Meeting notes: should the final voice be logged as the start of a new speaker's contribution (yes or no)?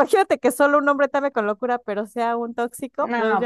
yes